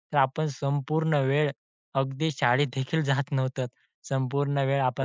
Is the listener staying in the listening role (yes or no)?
yes